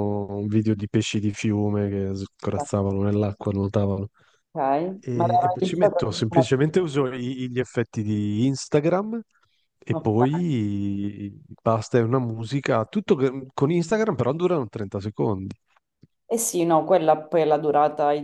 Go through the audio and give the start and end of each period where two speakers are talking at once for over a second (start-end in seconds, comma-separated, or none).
5.1-6.5